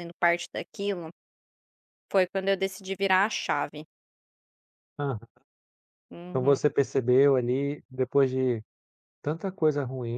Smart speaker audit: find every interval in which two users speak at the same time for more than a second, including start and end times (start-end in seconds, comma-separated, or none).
none